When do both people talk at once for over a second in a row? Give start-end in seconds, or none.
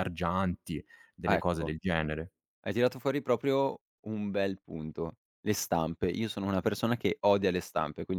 none